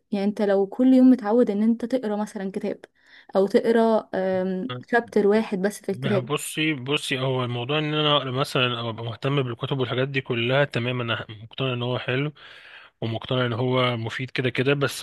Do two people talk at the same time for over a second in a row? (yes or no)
no